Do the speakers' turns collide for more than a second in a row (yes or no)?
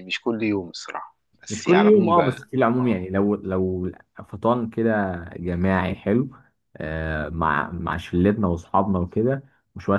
yes